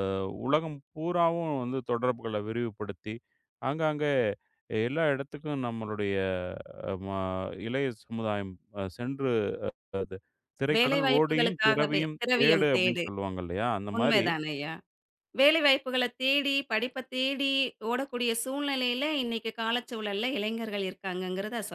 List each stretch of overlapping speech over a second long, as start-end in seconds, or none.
10.8-13.0